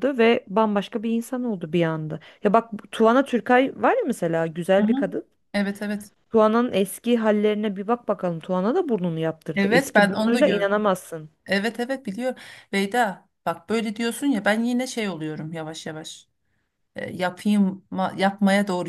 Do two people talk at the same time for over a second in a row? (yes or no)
yes